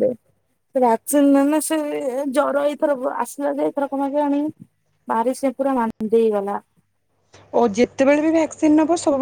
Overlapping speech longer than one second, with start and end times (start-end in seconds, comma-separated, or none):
none